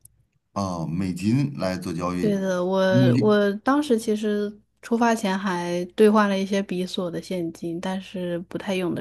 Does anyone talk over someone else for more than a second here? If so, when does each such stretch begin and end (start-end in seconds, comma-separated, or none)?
none